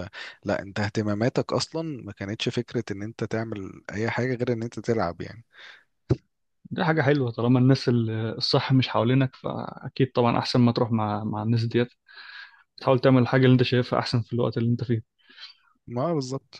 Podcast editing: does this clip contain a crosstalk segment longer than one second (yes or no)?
no